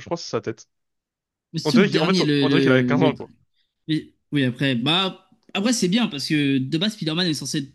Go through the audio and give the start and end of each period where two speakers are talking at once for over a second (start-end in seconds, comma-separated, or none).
1.6-3.1